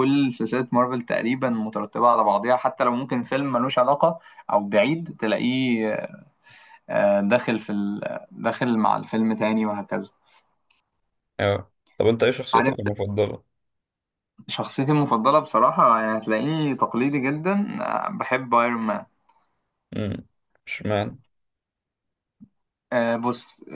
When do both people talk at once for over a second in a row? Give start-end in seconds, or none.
none